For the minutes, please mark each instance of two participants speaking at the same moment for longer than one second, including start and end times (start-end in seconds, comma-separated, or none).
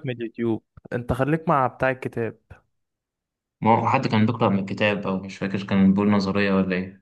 none